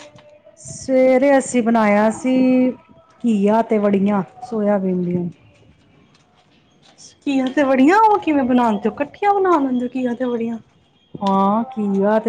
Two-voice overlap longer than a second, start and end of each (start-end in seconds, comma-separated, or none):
none